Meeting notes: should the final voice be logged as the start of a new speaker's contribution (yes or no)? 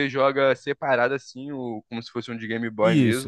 yes